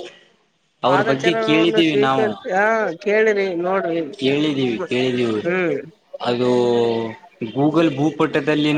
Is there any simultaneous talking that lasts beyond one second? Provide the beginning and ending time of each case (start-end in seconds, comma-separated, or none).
0.9-2.3